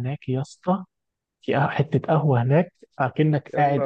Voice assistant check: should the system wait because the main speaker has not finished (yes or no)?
yes